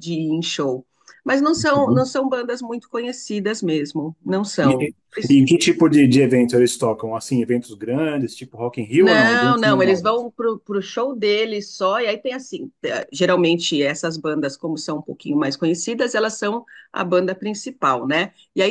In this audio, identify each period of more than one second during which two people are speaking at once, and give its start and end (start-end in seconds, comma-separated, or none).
9.0-10.2